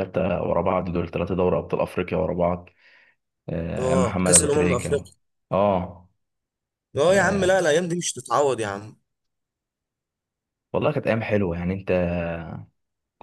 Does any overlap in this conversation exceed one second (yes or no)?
yes